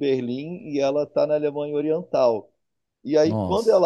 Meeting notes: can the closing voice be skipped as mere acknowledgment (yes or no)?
yes